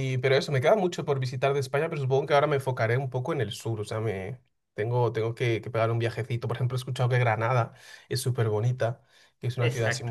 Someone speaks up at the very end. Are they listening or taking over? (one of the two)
listening